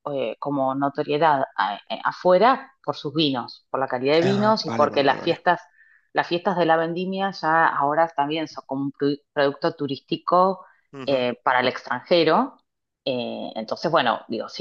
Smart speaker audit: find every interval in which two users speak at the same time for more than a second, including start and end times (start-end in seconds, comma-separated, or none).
4.2-5.5